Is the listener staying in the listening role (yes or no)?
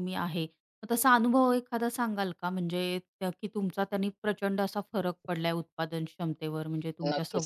no